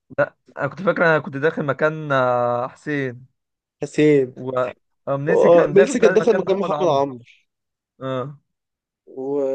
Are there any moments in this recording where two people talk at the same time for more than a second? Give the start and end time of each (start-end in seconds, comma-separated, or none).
5.3-7.0